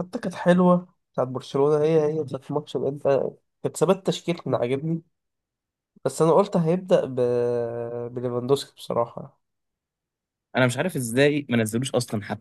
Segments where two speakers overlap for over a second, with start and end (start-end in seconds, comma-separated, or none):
none